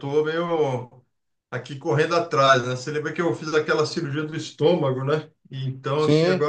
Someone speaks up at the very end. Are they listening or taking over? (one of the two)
listening